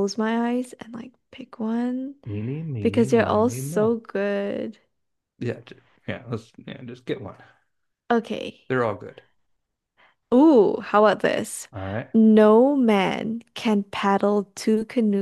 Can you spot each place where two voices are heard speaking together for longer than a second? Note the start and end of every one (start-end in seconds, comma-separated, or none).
2.8-4.0